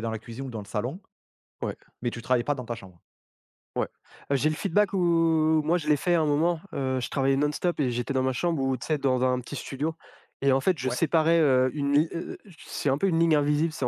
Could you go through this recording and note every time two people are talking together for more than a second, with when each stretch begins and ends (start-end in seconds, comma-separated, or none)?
none